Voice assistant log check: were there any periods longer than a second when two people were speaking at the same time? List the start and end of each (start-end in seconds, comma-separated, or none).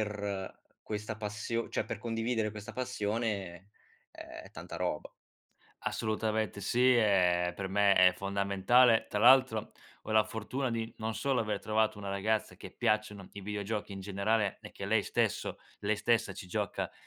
none